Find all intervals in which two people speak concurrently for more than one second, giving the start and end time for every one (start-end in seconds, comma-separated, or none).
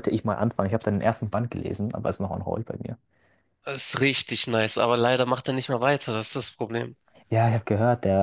none